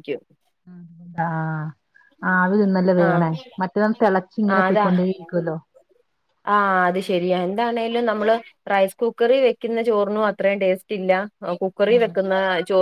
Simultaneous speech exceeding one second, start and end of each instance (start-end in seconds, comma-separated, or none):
none